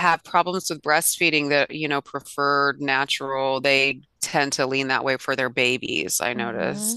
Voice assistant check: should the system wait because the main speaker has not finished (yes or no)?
no